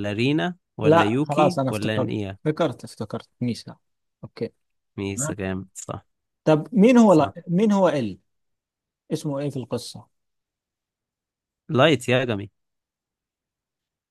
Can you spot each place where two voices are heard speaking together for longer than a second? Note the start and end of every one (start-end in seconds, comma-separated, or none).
0.8-2.4